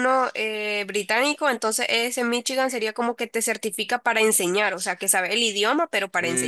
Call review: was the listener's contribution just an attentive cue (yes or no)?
no